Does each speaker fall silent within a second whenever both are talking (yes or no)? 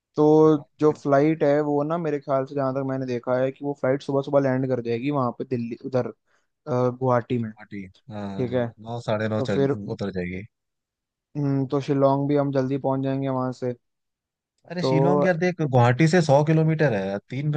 yes